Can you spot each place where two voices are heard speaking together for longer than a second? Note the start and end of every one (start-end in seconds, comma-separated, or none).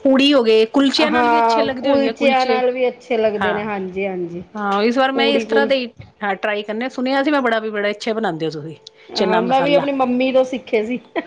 1.1-2.6